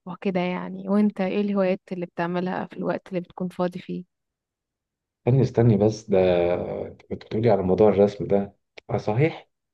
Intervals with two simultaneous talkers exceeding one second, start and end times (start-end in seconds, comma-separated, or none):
none